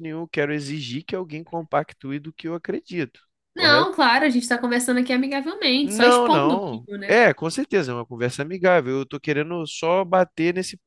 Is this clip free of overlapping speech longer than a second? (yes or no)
no